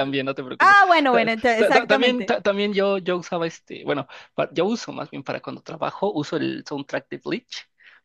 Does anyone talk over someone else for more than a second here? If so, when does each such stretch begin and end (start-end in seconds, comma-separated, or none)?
0.6-2.4